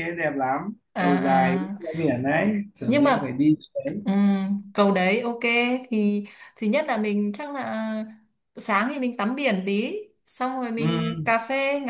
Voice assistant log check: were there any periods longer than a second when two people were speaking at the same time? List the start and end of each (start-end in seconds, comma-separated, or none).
none